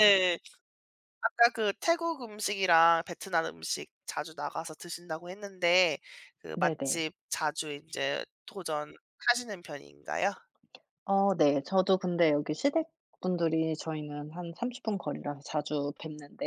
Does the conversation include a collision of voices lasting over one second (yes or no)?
no